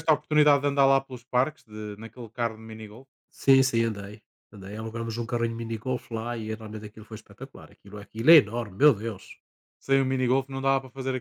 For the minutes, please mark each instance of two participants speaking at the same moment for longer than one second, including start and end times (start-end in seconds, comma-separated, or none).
none